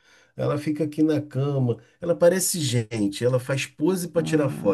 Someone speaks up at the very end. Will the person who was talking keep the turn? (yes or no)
no